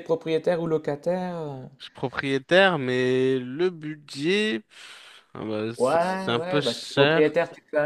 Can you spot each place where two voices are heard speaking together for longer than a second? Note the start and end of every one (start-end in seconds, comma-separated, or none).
5.8-7.4